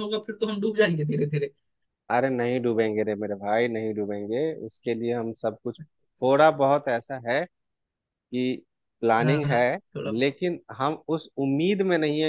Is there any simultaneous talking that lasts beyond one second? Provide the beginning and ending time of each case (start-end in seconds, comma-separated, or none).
none